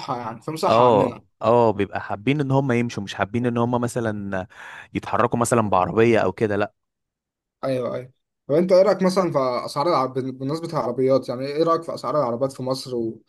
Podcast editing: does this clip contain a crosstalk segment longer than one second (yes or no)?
no